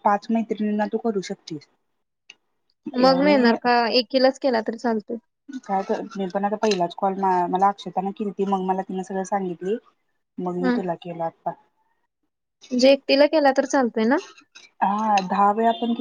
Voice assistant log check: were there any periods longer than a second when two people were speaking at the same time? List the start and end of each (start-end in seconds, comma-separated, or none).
none